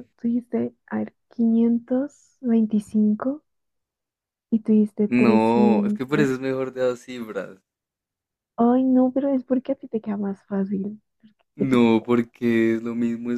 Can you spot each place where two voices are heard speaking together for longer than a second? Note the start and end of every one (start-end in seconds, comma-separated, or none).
5.1-6.3